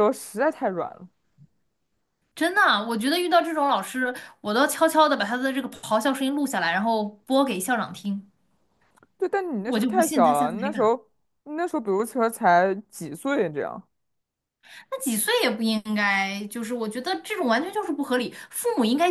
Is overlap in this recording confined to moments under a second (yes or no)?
no